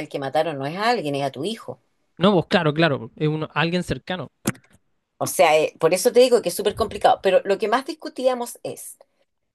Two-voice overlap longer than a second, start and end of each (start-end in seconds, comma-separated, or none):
none